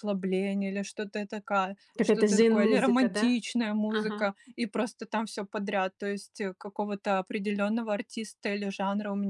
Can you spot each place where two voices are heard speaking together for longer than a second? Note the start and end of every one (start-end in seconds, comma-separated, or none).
2.0-3.3